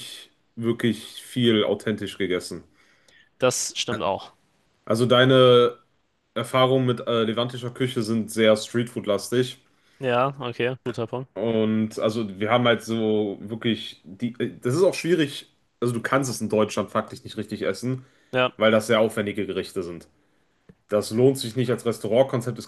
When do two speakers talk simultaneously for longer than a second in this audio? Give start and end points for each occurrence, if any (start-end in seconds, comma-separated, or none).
none